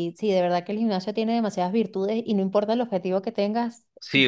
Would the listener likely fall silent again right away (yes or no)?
no